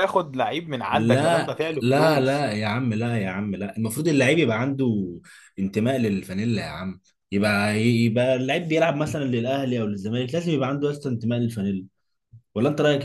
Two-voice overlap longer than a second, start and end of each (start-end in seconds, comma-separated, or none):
0.9-2.5